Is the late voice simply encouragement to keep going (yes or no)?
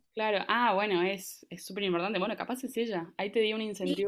no